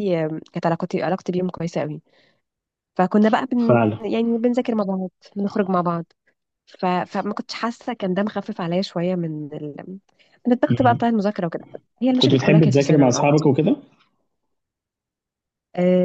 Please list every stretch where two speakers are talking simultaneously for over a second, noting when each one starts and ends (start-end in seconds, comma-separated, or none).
12.2-13.5